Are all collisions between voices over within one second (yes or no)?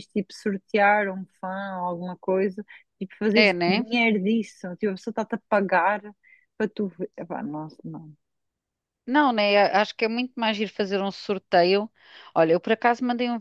yes